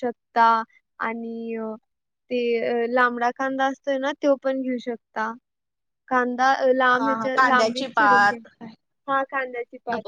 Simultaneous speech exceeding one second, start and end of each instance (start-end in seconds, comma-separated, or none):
7.0-8.4